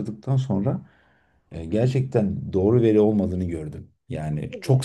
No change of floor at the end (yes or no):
no